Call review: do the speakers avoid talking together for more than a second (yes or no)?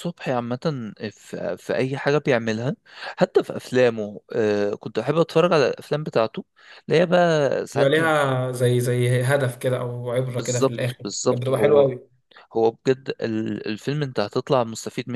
no